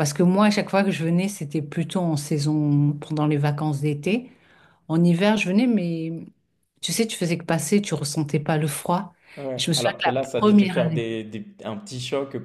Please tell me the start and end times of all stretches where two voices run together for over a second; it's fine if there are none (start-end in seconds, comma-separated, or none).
9.6-11.0